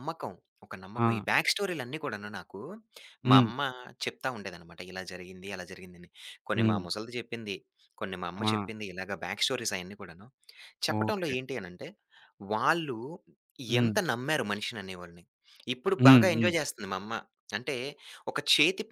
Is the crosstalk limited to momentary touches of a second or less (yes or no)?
yes